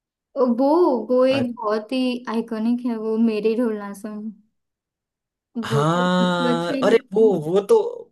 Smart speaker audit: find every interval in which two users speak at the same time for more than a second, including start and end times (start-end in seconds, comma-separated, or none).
5.7-7.3